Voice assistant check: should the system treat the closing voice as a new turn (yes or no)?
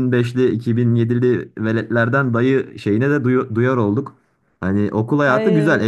no